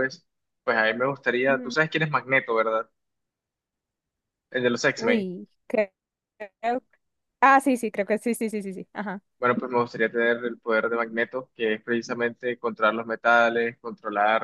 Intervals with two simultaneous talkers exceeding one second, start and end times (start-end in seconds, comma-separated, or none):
none